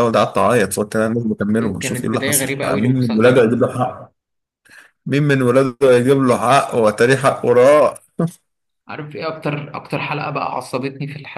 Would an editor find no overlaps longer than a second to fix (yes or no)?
no